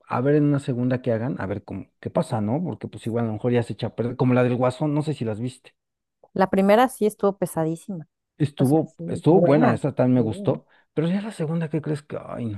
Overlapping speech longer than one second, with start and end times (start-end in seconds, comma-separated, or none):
8.6-10.2